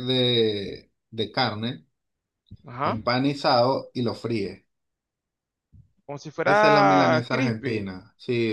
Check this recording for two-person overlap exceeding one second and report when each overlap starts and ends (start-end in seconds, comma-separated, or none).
6.4-7.9